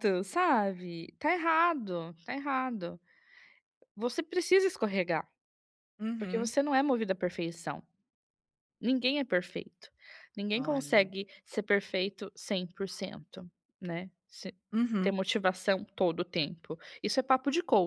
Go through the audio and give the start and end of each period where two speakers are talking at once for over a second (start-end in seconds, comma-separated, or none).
none